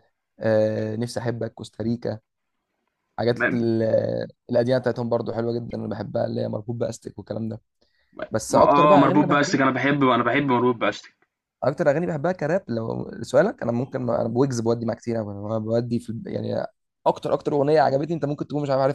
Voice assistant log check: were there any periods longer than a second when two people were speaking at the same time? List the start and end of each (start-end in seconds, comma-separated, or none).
8.5-9.7